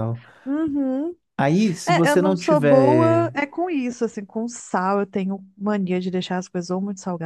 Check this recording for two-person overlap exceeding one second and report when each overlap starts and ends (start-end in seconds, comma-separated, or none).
1.9-3.3